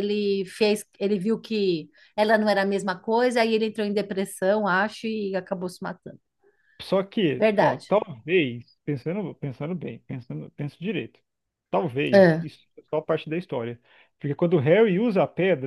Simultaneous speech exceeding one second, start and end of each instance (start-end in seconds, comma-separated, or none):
none